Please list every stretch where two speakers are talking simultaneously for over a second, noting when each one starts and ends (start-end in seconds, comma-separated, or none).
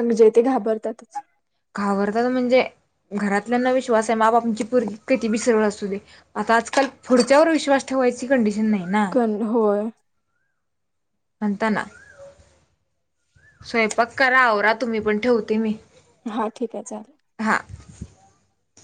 none